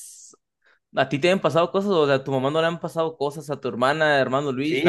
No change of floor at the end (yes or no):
no